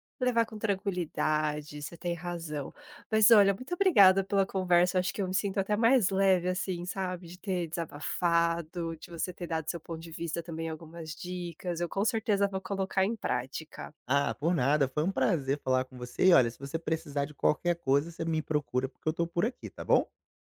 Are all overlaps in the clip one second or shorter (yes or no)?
yes